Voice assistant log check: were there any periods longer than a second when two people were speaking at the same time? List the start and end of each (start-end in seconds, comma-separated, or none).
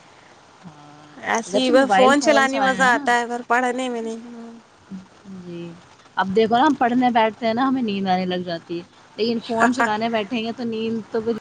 1.5-3.0